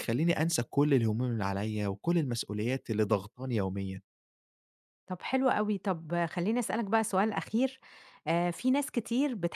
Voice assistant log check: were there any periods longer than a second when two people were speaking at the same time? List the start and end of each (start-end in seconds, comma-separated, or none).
none